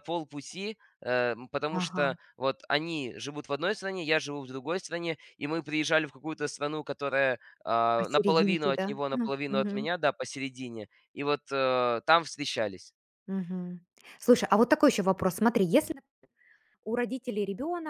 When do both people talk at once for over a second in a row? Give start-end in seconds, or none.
8.0-9.9